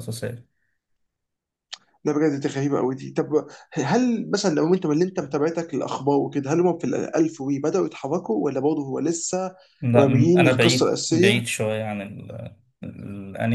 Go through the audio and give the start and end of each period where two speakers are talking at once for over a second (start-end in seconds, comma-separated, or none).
10.0-11.5